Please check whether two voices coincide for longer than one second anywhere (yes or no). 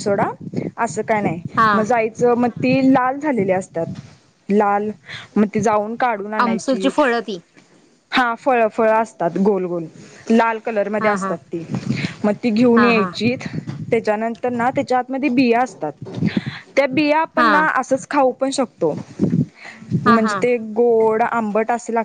no